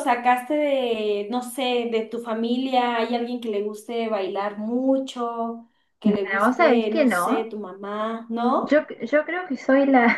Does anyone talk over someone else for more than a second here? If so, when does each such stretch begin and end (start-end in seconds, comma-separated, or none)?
6.0-7.5